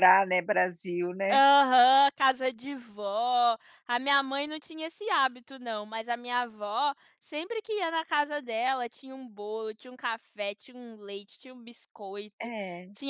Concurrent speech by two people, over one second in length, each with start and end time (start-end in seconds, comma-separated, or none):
none